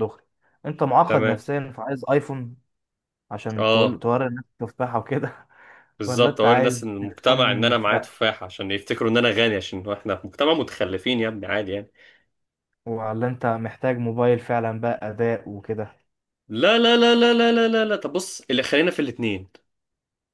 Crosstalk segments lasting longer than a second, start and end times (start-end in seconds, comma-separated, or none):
6.1-8.1